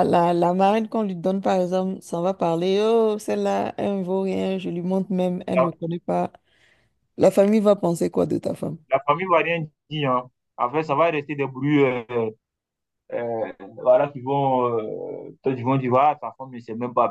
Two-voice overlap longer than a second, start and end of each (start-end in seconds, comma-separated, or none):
none